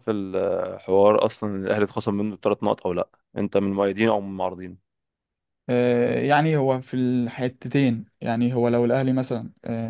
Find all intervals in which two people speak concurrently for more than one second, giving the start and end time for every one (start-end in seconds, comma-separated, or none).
none